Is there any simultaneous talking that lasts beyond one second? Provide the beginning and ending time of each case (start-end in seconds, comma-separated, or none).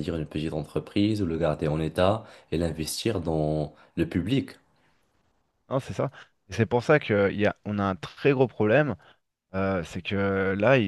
none